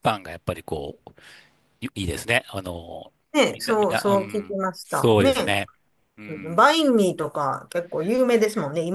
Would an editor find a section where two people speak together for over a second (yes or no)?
yes